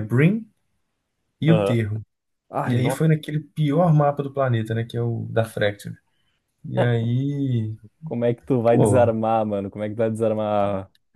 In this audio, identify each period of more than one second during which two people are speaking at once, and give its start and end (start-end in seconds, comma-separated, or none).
none